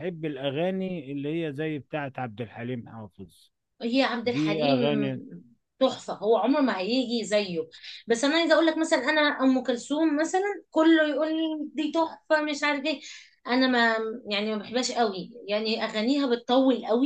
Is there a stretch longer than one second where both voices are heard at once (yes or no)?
no